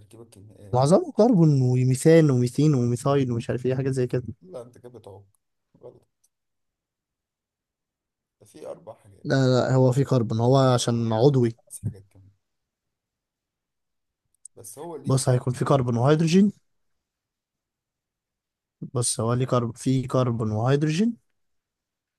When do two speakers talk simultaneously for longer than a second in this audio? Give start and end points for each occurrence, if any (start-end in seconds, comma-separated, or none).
15.1-16.4